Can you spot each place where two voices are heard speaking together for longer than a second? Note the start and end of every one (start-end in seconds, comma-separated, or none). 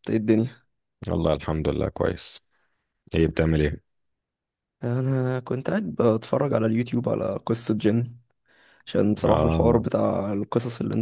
none